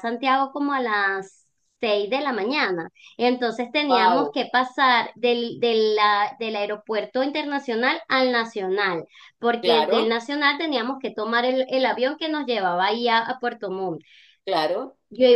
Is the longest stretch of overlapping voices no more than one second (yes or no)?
yes